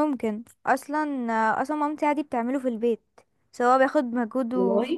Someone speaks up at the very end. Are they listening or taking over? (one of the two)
listening